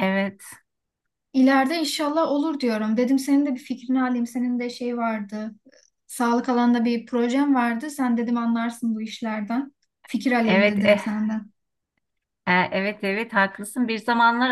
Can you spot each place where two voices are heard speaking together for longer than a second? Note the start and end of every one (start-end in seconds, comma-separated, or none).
none